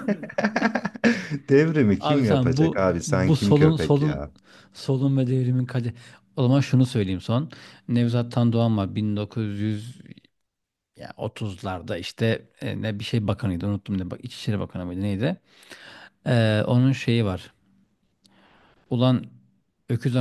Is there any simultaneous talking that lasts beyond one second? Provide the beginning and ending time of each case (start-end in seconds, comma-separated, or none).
2.0-4.2